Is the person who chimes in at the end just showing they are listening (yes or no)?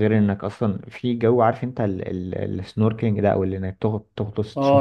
no